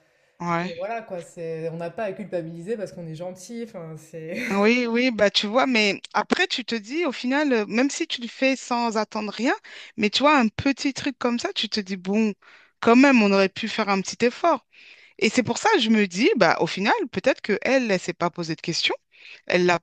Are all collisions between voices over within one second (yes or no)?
yes